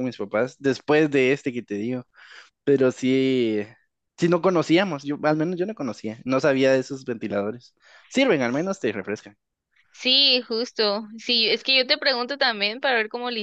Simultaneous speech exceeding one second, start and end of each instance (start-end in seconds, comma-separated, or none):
none